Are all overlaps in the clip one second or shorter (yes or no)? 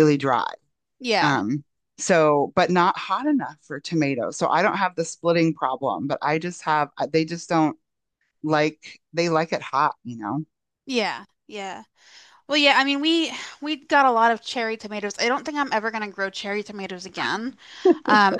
yes